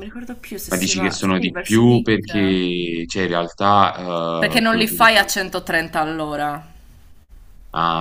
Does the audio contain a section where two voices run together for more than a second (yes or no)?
yes